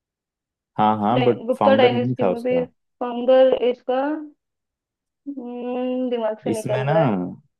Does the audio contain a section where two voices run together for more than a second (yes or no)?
yes